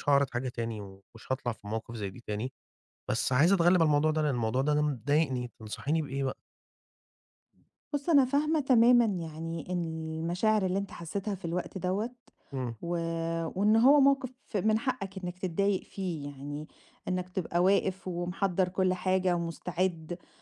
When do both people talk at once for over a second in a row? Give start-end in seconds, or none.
none